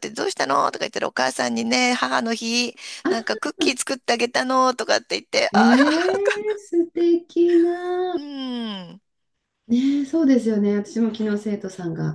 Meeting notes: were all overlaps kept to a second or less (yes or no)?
yes